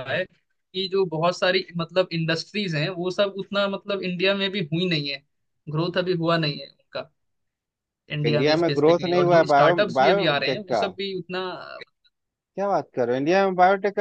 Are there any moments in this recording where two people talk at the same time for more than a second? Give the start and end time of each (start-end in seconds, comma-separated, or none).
8.2-10.8